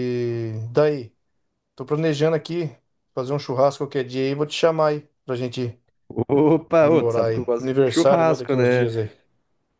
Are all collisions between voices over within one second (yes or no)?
no